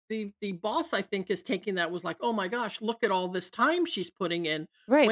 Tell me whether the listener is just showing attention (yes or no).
no